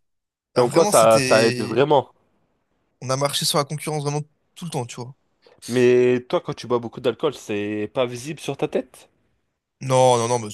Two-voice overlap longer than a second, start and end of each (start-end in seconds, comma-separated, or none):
0.6-1.8